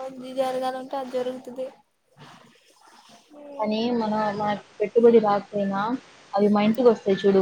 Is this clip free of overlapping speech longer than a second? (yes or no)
yes